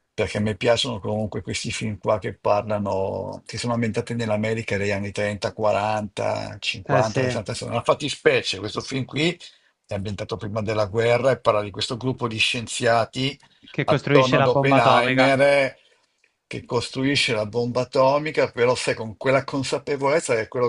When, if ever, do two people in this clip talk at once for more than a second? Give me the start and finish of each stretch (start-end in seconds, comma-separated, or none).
13.8-15.3